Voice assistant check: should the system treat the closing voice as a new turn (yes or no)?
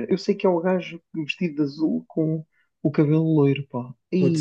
yes